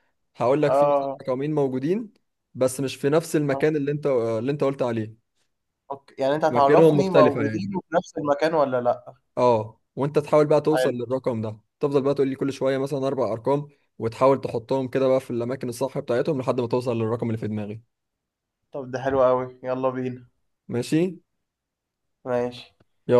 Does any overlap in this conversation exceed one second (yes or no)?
yes